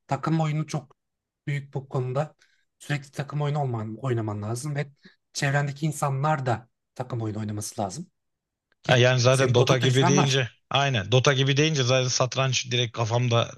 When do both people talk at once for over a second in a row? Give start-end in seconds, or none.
8.9-10.4